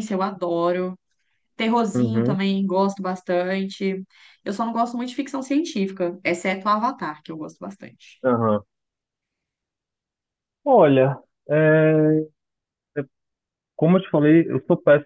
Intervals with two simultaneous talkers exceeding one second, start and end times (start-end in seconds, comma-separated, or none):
none